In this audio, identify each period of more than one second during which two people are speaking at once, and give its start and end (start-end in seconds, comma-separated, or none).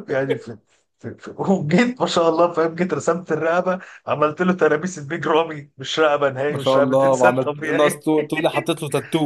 6.5-8.1